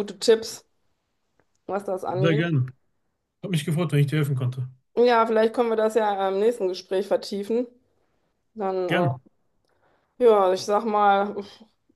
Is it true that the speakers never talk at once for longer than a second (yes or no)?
yes